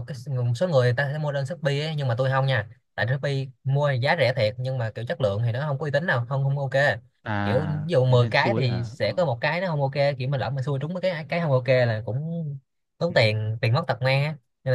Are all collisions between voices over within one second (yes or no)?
no